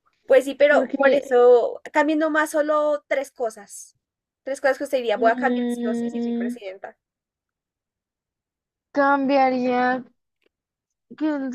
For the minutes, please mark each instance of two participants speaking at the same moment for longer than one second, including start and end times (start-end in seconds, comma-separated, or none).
5.1-6.6